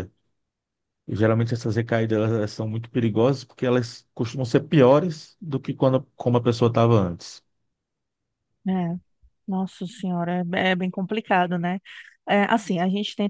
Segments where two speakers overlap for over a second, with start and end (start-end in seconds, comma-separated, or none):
none